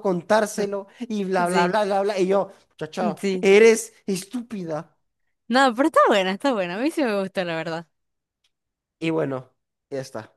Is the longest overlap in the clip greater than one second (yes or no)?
no